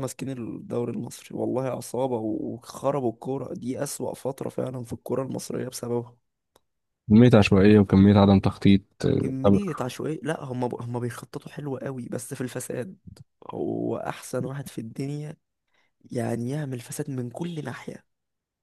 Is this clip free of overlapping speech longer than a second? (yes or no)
yes